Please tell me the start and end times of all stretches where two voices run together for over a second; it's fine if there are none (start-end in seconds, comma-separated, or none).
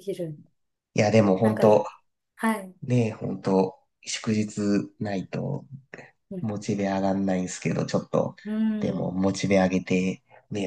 none